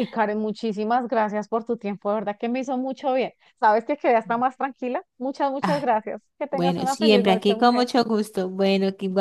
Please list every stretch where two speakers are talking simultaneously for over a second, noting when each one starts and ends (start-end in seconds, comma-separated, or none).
6.5-7.9